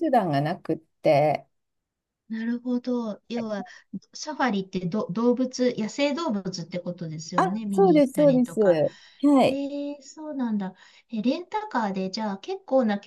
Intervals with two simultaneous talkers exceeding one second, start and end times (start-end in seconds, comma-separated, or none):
7.4-8.8